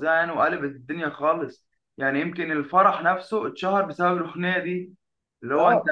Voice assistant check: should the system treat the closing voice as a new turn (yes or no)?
yes